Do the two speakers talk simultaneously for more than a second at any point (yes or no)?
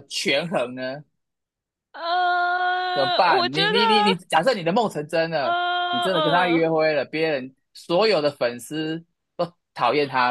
yes